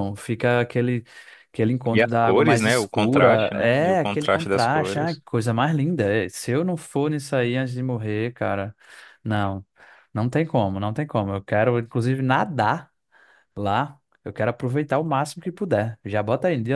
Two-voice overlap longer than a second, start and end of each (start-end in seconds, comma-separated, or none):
1.9-5.2